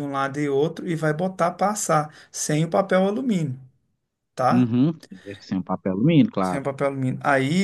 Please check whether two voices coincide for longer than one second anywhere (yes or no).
no